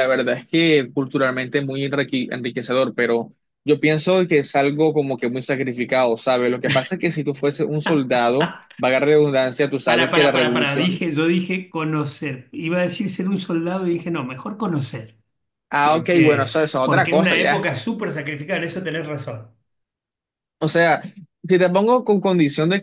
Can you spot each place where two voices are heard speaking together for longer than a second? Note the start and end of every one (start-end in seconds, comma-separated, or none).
9.8-11.0, 15.8-17.7